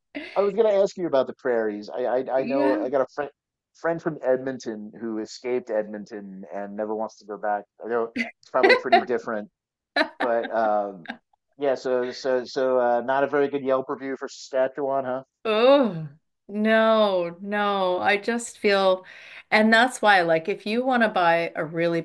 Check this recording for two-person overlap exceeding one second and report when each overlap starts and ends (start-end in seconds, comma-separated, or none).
none